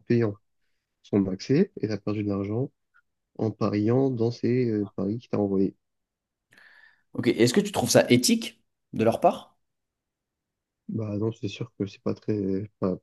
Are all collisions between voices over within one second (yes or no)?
yes